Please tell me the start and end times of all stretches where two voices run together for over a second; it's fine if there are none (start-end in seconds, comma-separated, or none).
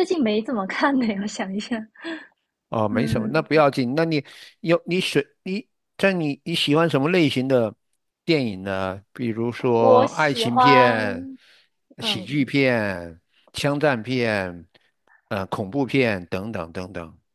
9.8-11.3